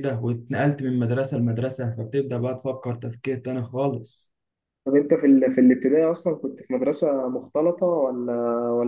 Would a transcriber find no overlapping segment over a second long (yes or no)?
yes